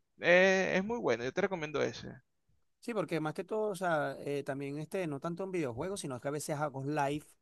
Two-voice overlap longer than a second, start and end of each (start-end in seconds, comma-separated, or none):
none